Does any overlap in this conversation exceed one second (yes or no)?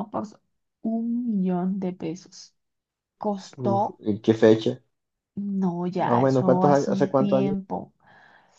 yes